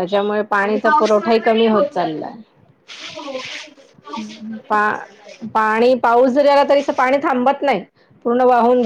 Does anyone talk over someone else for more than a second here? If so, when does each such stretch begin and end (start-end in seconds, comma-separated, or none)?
0.6-2.3